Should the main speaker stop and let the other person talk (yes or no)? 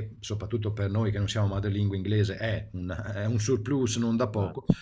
no